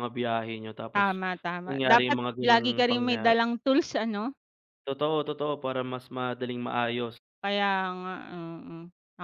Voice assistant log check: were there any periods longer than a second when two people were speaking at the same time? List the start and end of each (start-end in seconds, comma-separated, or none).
1.7-3.4